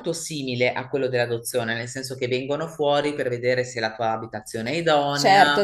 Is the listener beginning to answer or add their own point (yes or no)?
yes